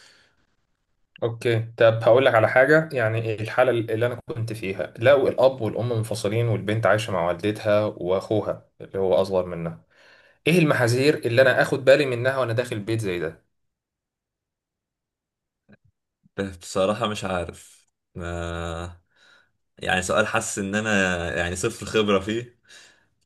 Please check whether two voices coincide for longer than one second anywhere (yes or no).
no